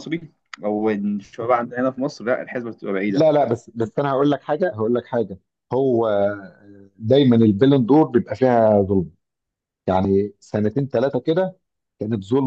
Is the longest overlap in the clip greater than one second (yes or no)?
no